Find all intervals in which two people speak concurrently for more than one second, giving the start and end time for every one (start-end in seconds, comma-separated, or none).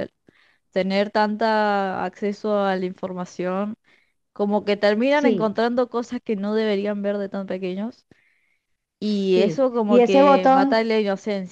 9.3-10.9